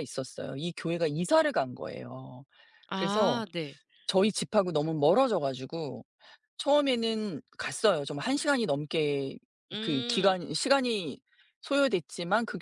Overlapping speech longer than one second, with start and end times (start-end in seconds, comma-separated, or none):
none